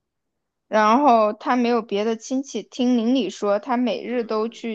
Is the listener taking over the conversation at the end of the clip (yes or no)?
no